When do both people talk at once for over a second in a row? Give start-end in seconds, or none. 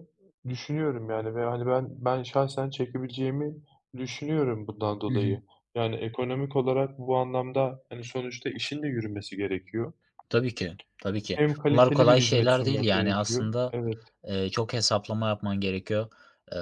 11.4-13.8